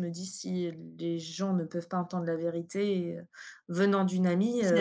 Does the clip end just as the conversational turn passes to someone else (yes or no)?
yes